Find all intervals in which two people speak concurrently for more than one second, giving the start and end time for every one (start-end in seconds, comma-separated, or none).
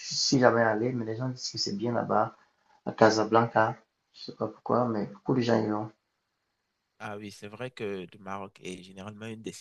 none